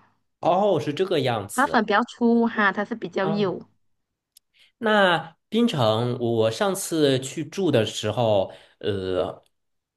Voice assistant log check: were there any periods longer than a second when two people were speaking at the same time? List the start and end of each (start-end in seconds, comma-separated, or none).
none